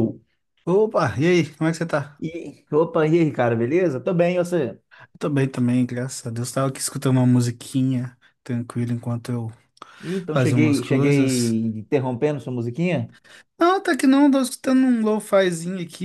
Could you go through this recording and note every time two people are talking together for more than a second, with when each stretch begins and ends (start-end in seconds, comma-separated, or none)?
10.3-11.5